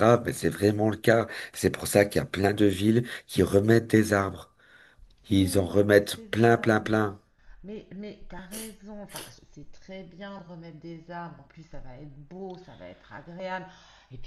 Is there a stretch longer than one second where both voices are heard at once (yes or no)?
yes